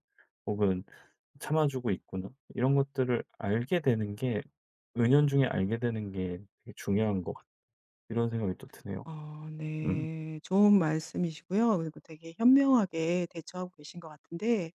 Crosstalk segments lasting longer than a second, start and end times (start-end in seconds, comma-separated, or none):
none